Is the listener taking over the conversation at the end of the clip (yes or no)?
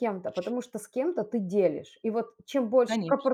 no